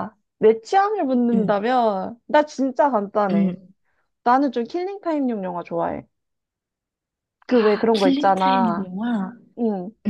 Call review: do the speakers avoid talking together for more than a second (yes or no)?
no